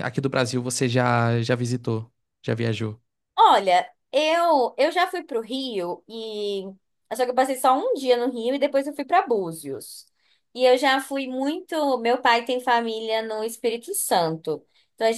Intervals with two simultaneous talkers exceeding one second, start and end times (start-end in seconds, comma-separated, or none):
none